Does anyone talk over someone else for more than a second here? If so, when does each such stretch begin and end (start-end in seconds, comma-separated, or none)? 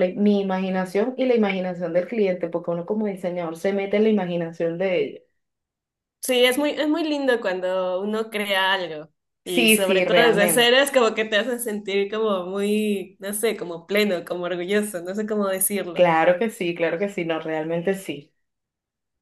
9.4-10.8